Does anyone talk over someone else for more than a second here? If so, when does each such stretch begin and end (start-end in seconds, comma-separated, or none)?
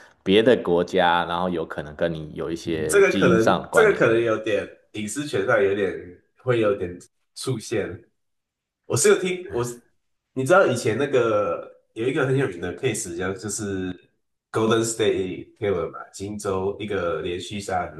2.5-4.2